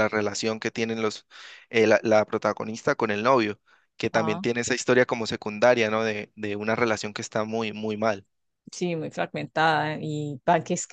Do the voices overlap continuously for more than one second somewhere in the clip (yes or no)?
no